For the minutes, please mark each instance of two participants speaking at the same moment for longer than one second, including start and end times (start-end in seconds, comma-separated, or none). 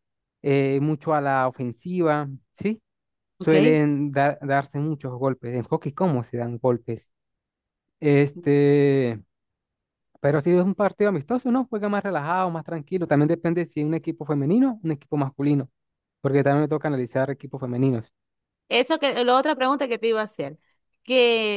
none